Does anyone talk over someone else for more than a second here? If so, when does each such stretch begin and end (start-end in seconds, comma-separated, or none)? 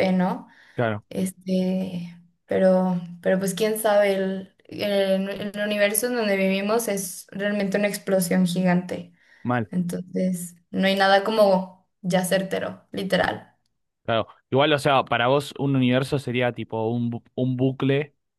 none